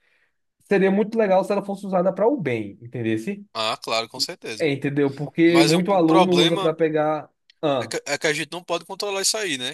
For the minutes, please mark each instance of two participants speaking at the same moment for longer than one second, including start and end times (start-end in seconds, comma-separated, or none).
5.5-6.8